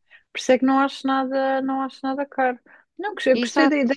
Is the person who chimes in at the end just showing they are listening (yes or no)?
yes